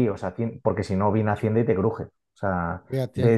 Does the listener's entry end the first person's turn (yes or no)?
no